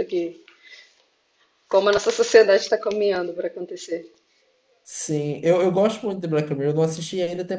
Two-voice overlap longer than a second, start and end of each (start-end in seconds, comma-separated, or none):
none